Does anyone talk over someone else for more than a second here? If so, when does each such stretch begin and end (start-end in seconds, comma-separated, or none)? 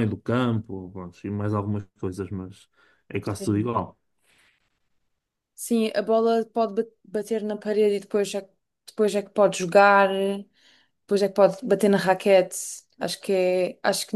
none